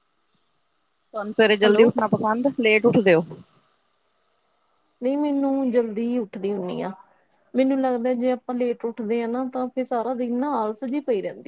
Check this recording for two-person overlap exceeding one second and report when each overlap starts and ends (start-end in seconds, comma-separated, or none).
none